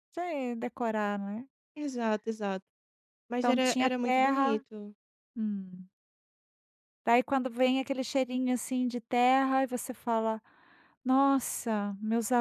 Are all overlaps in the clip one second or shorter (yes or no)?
no